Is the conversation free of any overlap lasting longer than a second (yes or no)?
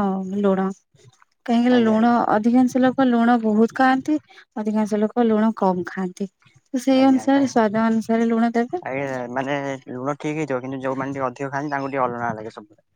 yes